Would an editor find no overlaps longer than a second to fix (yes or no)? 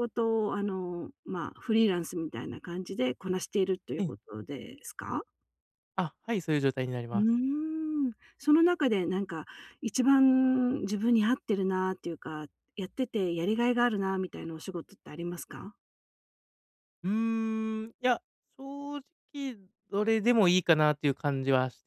yes